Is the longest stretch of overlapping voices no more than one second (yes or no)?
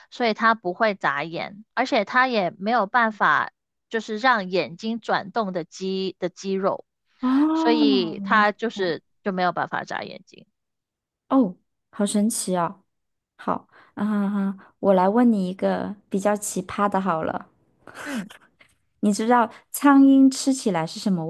no